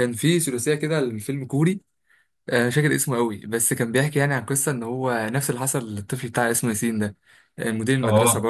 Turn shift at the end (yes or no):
no